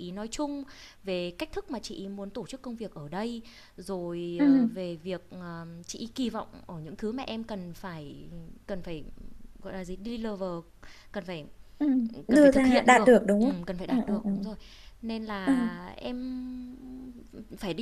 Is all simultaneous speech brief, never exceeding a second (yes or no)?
no